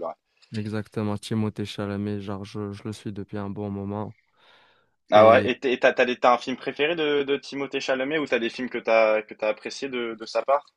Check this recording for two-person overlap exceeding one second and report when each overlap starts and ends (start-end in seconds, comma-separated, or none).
none